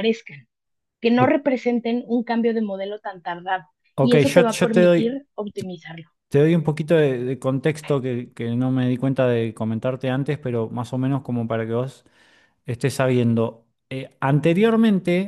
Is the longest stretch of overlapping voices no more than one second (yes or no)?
no